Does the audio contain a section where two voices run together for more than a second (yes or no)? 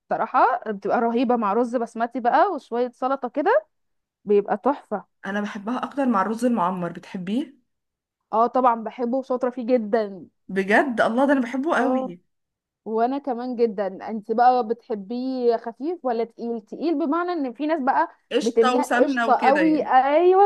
yes